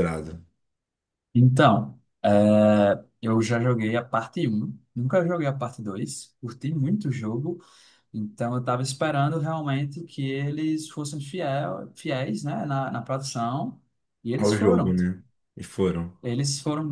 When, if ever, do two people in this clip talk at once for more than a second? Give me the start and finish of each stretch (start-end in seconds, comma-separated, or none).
none